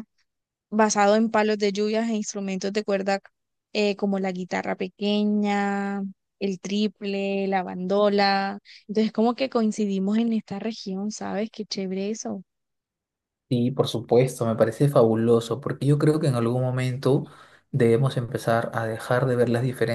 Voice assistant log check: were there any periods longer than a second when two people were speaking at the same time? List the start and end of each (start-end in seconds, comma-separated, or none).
none